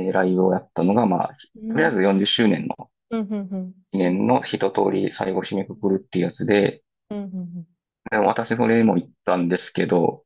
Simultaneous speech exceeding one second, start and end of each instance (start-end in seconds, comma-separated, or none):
none